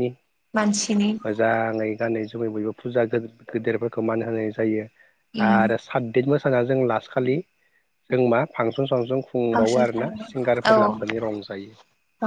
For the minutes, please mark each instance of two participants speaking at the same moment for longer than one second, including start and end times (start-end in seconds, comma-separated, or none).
9.5-10.9